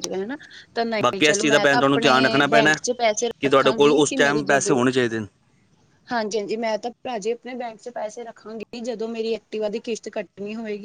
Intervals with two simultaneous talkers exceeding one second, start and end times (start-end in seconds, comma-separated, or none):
1.0-2.7, 3.4-4.8